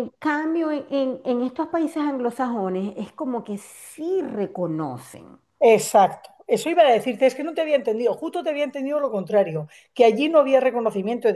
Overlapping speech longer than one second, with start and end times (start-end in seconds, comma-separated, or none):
none